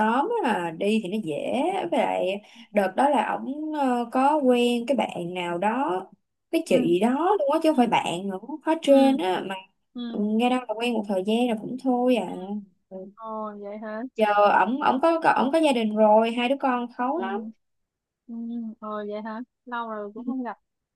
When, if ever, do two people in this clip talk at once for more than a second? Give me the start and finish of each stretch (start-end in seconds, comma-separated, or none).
none